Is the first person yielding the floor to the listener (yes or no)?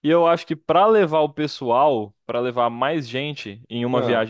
no